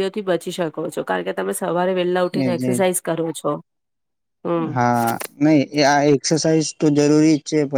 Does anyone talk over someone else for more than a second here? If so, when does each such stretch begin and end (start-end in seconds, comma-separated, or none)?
none